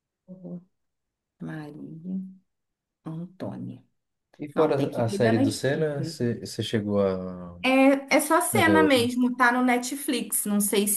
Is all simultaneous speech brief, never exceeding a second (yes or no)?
no